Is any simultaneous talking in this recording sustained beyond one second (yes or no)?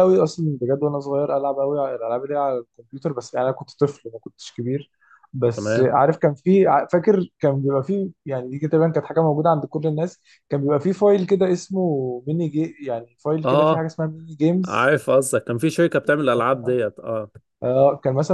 no